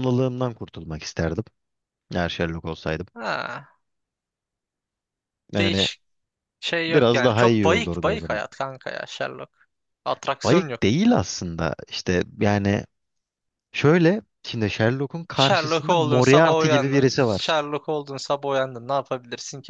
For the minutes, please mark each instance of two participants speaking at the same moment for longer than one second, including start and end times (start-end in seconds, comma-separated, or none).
6.9-8.4, 15.3-17.5